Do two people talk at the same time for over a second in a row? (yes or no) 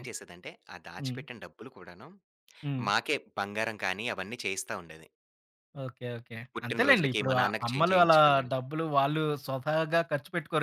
yes